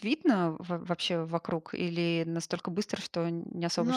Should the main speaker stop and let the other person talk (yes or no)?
yes